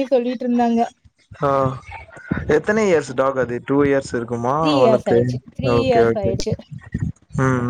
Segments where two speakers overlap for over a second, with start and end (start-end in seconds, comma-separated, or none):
none